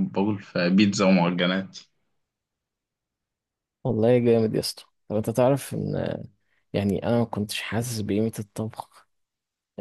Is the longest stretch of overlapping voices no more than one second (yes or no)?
yes